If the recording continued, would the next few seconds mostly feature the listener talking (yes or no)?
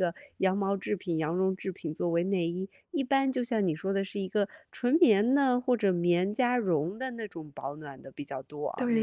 yes